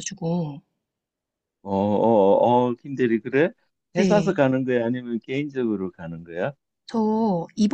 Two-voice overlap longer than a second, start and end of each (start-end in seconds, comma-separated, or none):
none